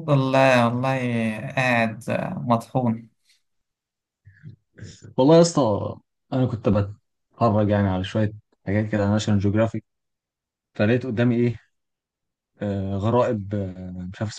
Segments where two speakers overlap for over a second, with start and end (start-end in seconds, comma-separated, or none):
none